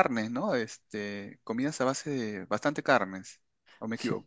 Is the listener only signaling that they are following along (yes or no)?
no